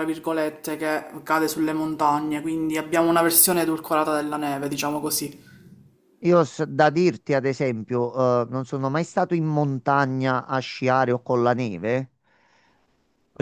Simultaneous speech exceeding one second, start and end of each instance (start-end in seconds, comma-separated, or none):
none